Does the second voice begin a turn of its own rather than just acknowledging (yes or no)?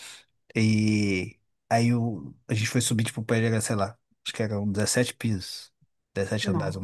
no